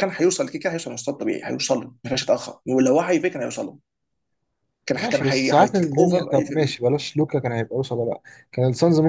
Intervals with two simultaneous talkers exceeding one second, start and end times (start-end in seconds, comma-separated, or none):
4.9-6.8